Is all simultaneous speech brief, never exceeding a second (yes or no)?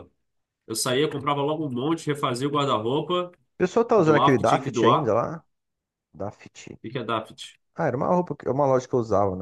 no